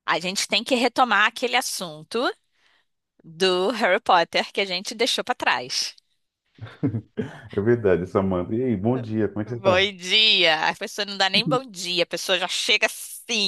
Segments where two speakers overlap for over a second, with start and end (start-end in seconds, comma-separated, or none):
none